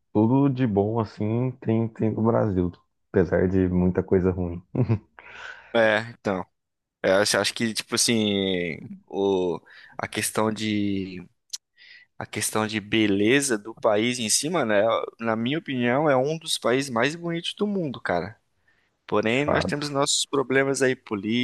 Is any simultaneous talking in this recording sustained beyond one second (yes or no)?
no